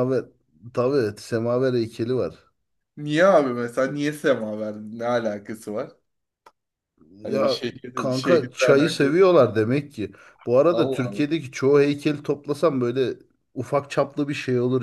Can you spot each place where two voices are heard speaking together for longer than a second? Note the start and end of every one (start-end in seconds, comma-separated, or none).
7.2-9.1